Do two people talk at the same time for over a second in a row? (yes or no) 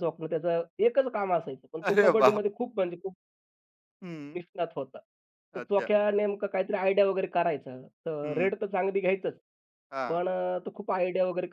no